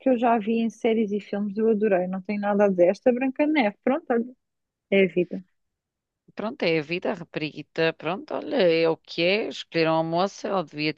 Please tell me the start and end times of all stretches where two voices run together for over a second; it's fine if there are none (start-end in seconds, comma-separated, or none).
none